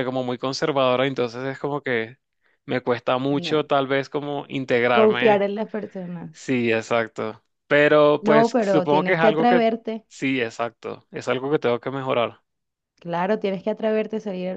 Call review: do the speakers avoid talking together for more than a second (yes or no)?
no